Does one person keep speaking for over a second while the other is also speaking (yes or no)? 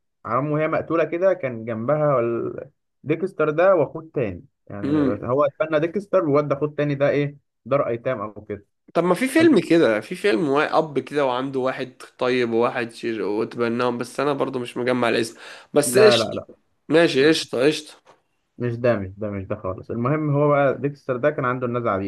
no